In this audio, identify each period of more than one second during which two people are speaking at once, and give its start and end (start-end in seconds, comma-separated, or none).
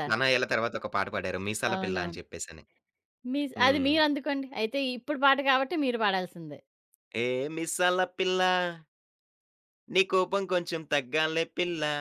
none